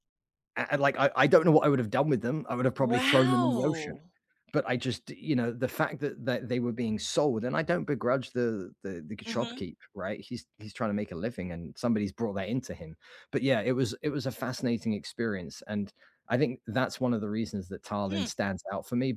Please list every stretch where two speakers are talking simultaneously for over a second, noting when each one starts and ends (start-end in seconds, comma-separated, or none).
2.8-4.0